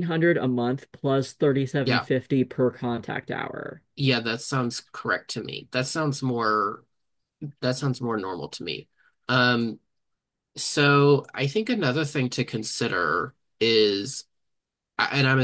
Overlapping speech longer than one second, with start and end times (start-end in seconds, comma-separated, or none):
none